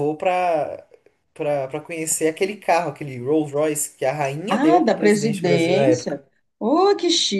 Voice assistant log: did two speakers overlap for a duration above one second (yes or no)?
yes